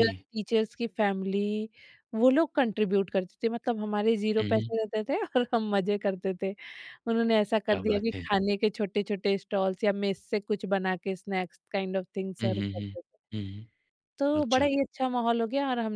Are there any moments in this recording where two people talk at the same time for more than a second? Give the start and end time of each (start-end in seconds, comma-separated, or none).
none